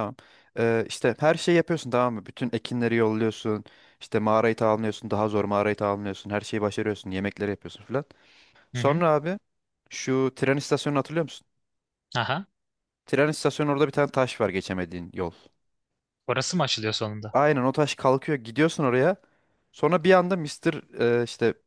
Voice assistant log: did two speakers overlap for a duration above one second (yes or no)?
no